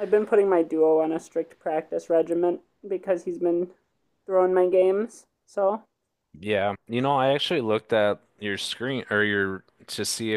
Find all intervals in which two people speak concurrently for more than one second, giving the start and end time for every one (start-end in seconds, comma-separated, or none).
none